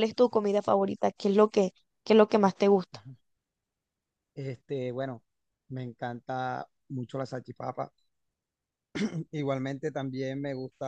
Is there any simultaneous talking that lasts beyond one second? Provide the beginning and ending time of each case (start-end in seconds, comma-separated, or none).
none